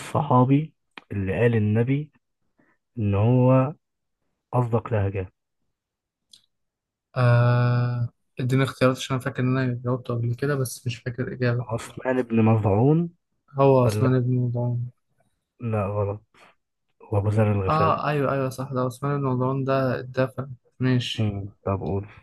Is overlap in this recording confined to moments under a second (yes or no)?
yes